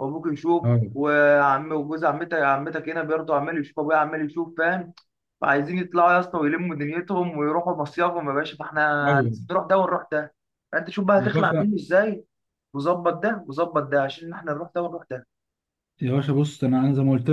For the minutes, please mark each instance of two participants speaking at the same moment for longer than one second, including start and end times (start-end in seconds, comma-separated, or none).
none